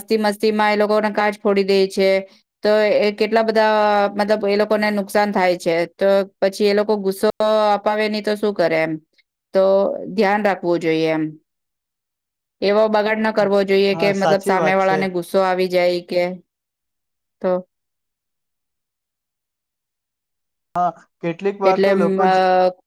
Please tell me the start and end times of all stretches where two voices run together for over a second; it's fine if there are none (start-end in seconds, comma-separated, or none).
13.4-15.0